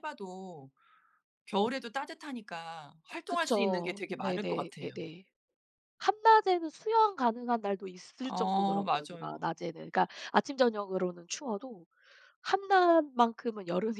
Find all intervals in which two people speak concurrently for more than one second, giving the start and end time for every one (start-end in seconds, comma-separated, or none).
3.3-5.0, 8.2-9.5